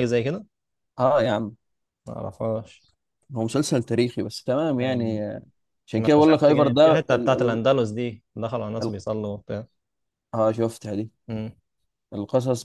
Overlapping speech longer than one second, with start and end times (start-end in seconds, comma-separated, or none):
6.0-7.6